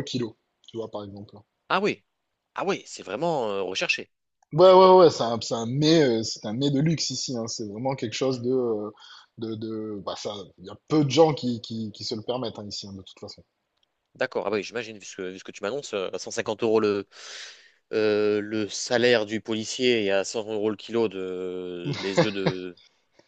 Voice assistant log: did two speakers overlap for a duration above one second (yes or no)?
no